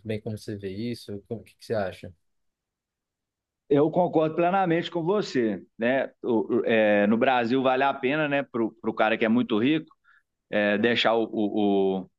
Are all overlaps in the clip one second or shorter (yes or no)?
yes